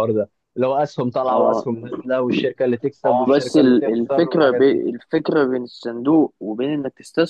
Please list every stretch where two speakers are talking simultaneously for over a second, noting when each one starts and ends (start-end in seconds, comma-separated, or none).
3.3-4.8